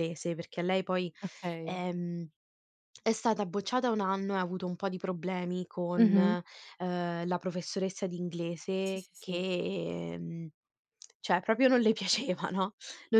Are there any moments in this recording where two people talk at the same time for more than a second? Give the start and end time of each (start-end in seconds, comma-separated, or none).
none